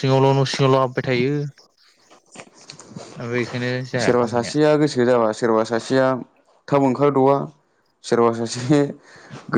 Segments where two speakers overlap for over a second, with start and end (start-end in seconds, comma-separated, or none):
none